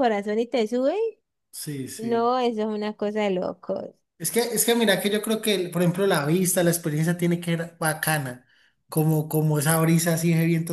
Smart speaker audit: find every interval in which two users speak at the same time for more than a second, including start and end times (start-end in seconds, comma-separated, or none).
none